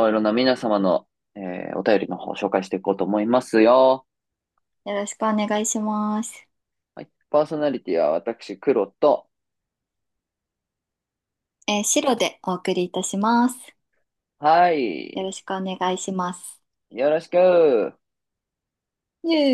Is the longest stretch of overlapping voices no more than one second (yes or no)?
yes